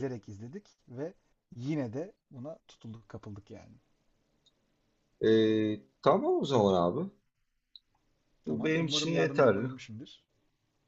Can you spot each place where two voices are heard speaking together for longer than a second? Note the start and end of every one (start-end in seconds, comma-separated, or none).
8.5-9.7